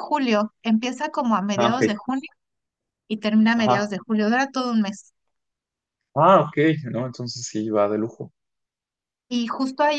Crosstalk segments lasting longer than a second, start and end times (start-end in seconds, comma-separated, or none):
none